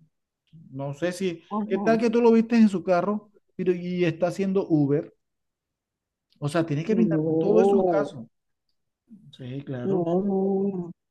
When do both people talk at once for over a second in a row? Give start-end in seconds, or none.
6.9-8.1